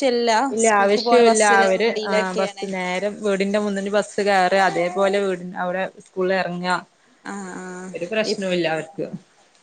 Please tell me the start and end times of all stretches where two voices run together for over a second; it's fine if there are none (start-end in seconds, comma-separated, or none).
0.5-2.6